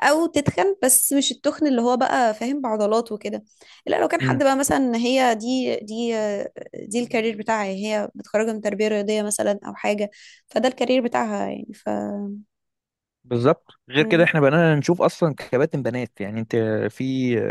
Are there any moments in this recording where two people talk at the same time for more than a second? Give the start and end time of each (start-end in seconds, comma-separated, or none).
none